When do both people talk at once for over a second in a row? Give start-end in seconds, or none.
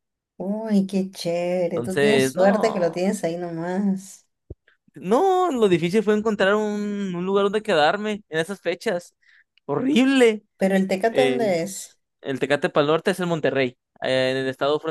1.7-3.0